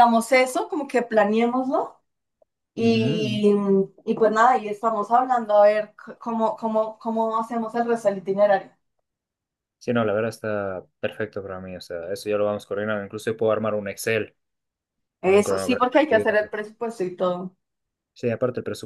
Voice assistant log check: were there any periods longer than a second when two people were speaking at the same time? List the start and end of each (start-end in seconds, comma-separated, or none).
15.2-16.6